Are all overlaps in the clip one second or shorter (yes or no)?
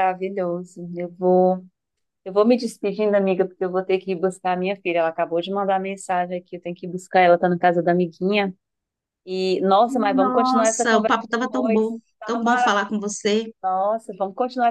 no